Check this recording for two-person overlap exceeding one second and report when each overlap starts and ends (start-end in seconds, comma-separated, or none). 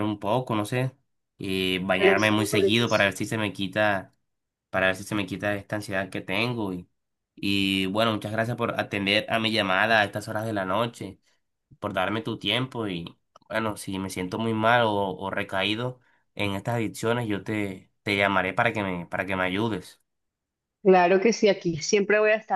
1.9-3.2